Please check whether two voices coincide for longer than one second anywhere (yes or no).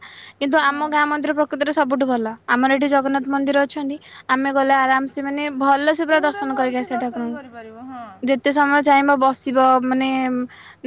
yes